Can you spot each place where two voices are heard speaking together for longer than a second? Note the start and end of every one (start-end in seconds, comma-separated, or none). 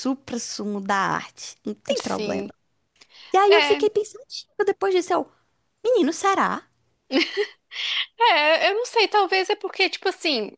none